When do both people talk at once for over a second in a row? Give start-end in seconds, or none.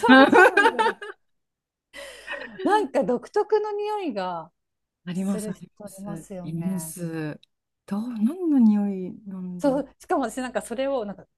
5.1-7.0